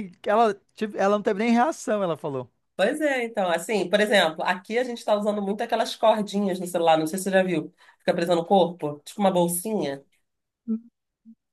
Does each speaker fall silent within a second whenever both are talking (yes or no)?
yes